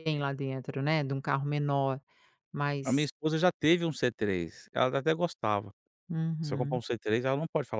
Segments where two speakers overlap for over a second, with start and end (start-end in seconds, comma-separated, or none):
none